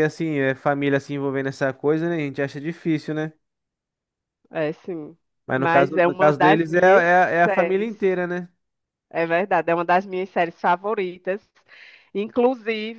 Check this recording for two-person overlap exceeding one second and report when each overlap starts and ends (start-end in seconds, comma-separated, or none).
5.5-7.9